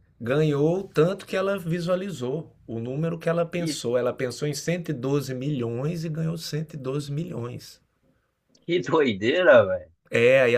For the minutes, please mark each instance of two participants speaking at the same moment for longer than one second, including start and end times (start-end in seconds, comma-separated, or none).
none